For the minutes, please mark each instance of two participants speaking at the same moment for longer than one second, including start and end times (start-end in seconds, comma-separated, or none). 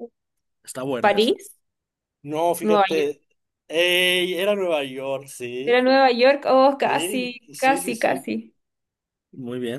6.8-8.3